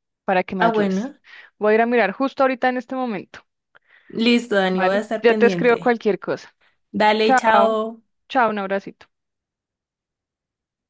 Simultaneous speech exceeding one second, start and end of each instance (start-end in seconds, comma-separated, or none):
4.7-6.0